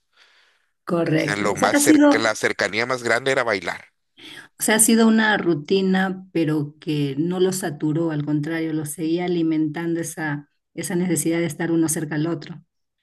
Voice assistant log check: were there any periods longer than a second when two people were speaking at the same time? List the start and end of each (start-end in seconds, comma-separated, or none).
1.0-2.3